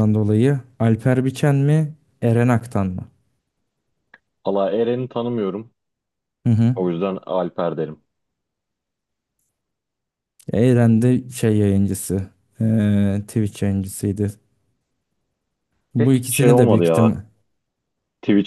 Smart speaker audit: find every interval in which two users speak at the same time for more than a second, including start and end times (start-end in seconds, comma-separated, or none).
16.0-17.2